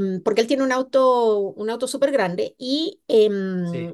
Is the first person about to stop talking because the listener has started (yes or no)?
no